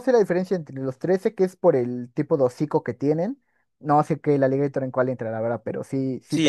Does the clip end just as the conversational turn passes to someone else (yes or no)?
yes